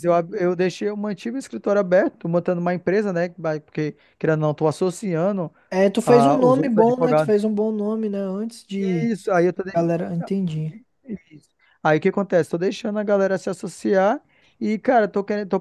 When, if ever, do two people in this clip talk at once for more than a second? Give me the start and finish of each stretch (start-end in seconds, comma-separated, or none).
6.0-7.3